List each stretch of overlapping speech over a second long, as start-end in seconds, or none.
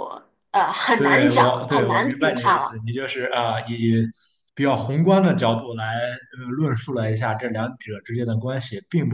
0.9-2.8